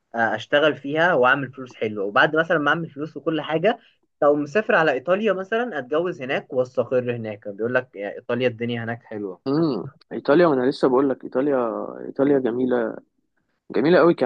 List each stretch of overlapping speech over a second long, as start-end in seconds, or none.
none